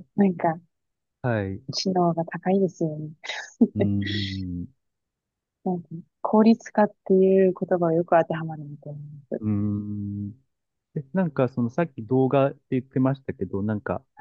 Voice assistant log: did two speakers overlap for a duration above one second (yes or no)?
no